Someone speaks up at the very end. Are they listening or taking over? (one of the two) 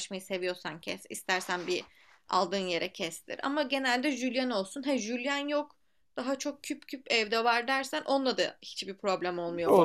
taking over